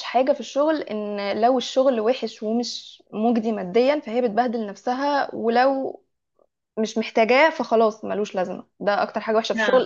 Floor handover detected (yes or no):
no